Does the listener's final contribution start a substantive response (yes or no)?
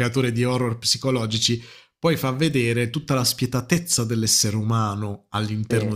no